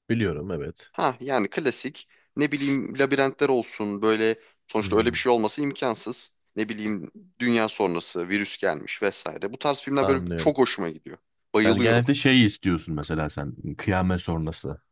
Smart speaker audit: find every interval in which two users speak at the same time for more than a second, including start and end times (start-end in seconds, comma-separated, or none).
none